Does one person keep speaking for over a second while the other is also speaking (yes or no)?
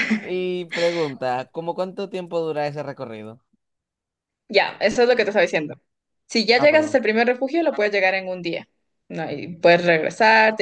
no